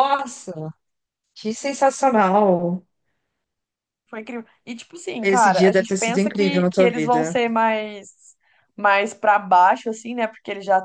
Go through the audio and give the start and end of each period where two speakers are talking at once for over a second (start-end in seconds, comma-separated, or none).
5.2-7.3